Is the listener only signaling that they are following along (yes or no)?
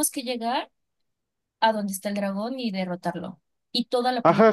no